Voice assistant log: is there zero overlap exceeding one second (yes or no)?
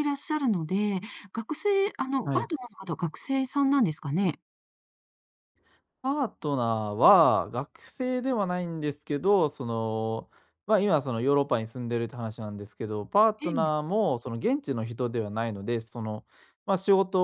yes